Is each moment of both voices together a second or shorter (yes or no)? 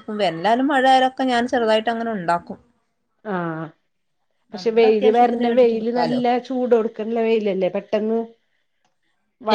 no